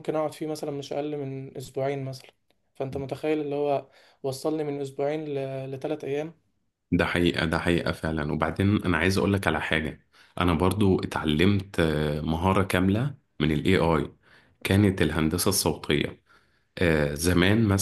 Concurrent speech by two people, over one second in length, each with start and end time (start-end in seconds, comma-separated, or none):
none